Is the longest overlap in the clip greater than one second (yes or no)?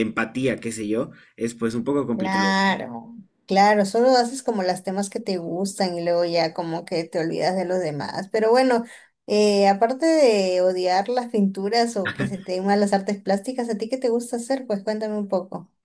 no